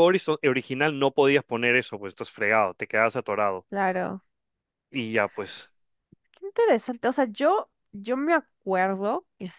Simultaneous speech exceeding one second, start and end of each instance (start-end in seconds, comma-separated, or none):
none